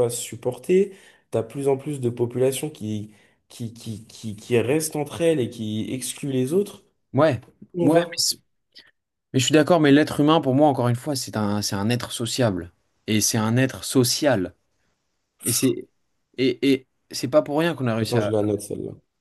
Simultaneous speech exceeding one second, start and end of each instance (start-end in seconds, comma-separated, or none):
none